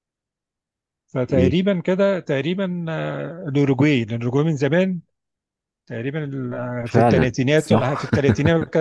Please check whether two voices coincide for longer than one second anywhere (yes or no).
yes